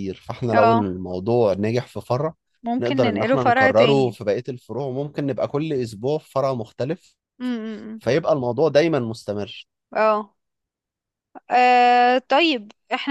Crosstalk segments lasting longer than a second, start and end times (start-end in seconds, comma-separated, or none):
2.8-4.2